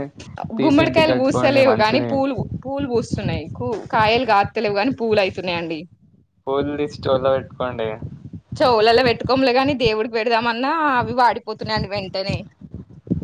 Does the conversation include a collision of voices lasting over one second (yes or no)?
yes